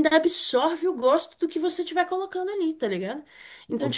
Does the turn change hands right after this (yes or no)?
no